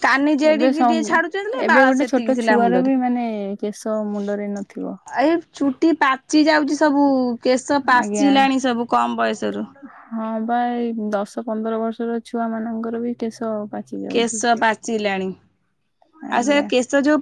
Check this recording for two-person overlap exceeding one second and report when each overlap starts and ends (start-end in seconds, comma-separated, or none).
0.5-2.9